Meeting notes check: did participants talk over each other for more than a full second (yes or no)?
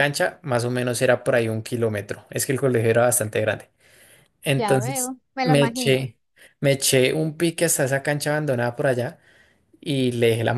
yes